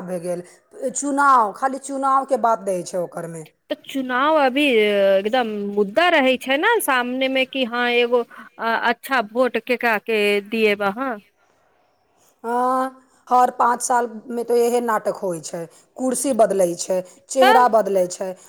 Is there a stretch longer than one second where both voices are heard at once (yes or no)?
no